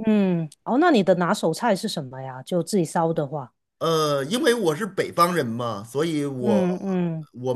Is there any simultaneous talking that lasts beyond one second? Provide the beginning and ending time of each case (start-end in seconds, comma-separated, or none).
none